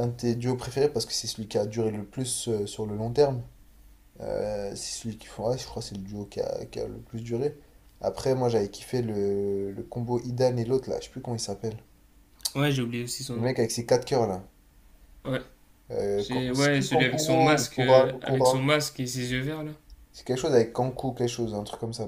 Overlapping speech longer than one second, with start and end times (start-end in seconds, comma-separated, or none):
16.2-18.7